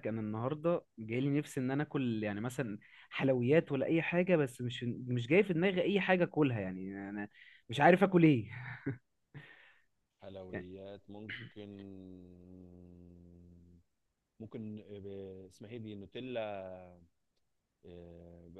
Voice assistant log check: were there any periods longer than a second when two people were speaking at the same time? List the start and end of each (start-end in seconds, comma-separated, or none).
none